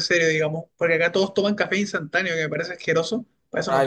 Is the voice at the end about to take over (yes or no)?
yes